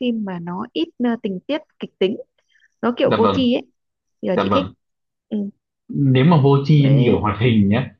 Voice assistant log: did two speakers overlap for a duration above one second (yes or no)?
no